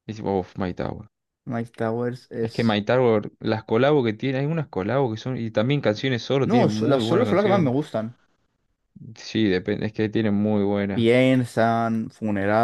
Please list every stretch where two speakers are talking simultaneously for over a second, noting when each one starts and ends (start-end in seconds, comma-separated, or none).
6.4-7.7